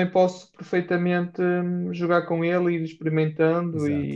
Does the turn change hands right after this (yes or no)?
yes